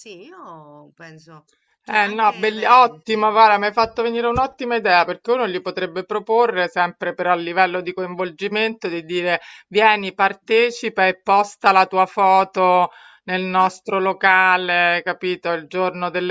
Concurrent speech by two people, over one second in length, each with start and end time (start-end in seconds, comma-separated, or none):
1.9-3.3